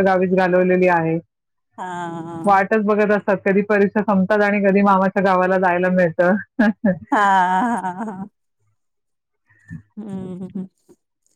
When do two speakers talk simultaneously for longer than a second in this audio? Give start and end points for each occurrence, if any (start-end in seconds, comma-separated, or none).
none